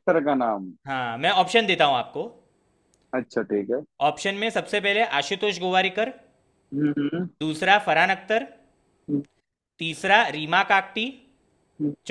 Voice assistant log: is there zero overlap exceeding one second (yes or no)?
yes